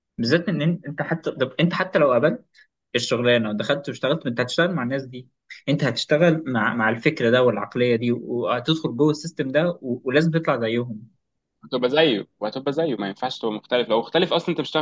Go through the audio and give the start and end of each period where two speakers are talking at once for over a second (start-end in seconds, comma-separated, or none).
none